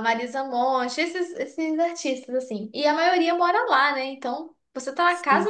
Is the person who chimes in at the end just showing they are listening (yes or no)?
yes